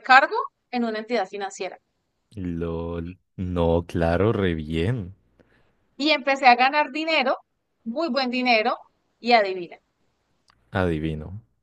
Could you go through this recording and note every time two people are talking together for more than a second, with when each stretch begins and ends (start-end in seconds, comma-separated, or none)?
none